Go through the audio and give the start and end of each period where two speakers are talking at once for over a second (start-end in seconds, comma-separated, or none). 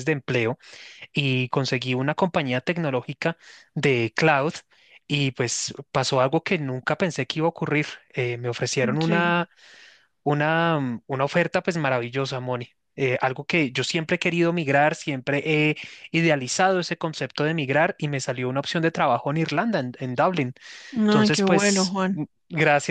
21.0-22.2